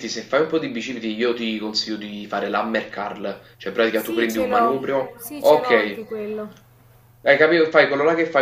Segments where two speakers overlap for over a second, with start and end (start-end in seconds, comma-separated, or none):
3.9-6.0